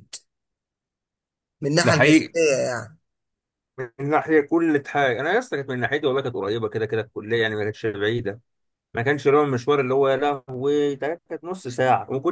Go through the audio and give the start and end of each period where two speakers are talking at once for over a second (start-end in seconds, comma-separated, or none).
none